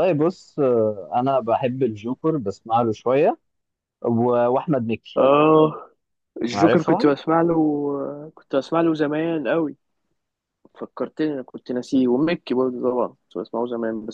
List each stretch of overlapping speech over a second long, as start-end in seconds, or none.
none